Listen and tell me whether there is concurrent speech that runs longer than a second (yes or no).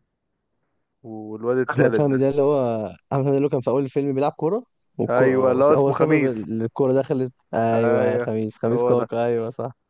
yes